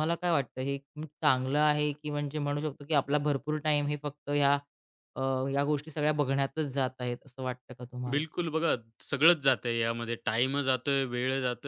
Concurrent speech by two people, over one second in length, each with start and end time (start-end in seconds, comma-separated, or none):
none